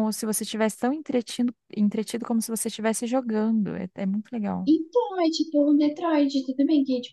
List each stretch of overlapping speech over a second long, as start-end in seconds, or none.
none